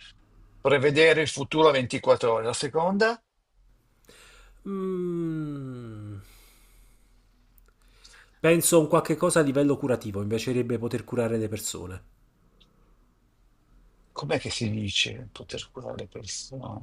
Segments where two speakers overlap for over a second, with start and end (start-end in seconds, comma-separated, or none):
none